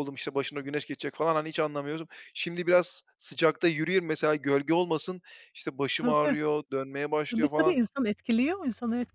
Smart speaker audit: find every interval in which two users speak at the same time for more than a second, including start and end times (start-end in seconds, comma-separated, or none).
none